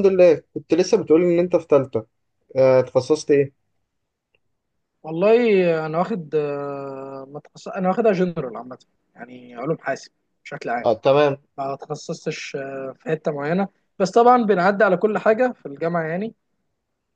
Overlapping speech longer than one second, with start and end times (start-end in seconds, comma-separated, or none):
none